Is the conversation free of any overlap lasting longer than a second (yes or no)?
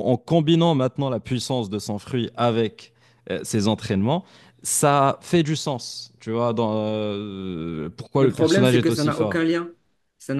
no